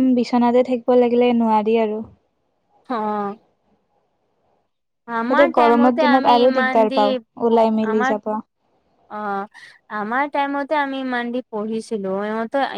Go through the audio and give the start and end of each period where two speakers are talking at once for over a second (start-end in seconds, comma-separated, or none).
5.3-7.0